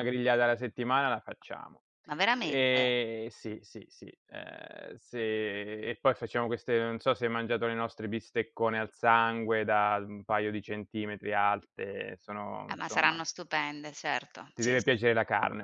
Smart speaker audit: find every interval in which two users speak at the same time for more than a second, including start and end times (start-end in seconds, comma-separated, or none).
none